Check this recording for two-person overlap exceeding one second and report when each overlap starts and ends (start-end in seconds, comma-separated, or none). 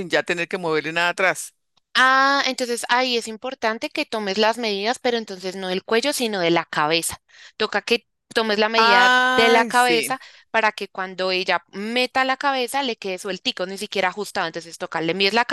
8.8-10.2